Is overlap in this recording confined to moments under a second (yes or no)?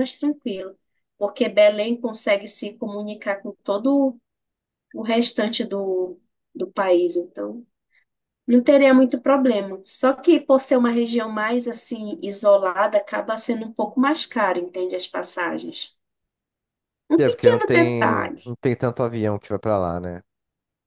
no